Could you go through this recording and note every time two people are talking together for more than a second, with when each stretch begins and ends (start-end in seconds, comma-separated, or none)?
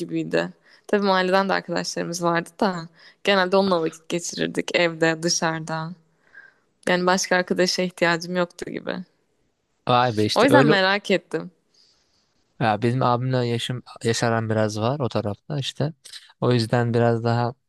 none